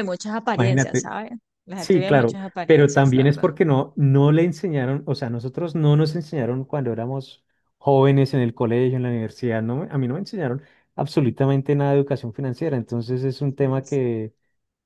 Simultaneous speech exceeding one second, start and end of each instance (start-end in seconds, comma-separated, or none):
1.8-3.5